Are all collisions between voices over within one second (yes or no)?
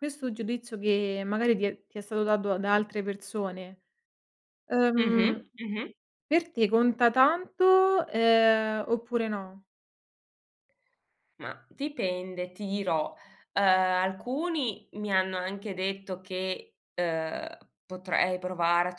yes